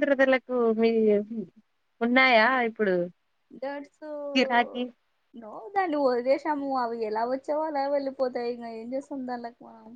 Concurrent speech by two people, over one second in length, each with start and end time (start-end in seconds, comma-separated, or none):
none